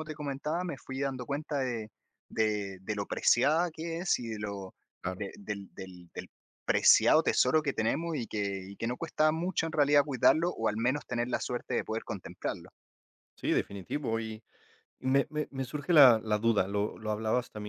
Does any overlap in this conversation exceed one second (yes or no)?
no